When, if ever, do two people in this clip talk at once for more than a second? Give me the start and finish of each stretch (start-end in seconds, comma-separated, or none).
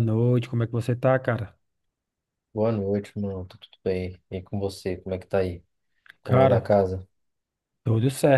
none